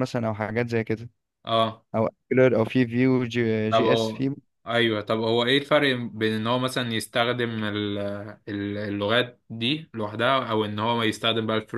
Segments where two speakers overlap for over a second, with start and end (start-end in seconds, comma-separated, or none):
none